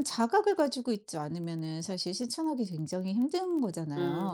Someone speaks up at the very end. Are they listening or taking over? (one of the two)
taking over